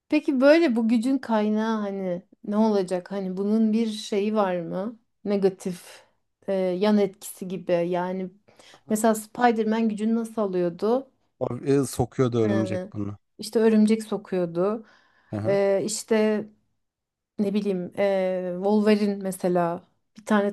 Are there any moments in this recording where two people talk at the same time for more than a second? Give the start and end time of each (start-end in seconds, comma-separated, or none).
none